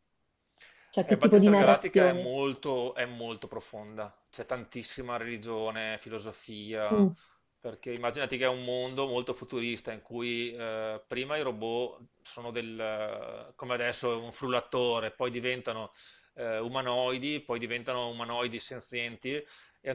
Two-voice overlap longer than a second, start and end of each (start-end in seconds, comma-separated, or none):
1.0-2.4